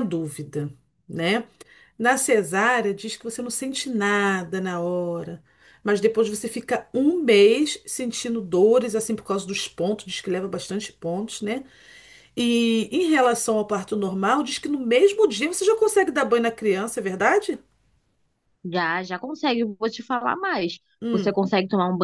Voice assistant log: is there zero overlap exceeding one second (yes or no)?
yes